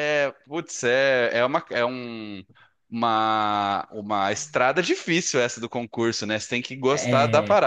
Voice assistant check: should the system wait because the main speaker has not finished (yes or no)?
yes